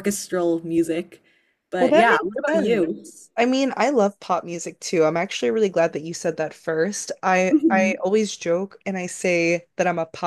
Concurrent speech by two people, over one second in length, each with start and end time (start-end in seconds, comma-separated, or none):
1.8-3.1